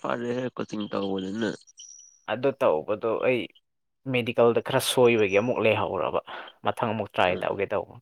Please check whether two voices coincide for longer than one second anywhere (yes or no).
no